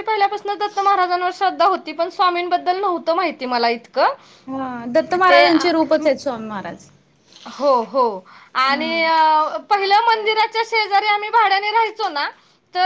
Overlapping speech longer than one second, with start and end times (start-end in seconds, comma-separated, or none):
none